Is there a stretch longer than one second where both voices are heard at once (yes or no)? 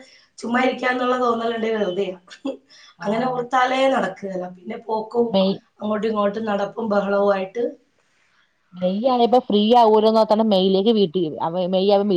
no